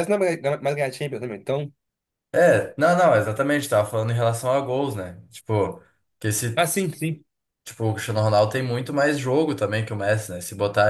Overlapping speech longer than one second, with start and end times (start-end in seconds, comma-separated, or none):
none